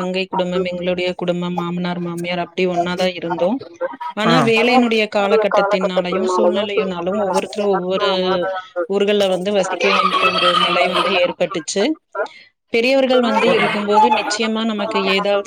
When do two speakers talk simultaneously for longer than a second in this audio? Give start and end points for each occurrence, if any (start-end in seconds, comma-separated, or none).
5.0-8.0